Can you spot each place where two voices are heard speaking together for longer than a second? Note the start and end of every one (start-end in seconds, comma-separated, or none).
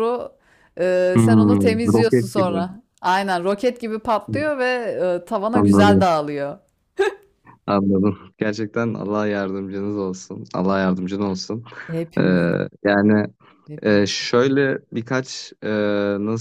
1.2-2.6